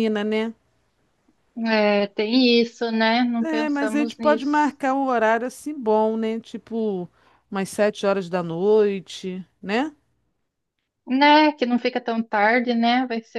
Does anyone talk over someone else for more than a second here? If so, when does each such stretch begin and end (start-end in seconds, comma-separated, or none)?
3.4-4.8